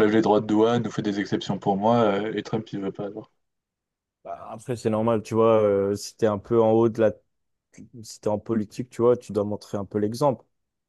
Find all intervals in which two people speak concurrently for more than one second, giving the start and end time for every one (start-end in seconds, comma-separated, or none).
none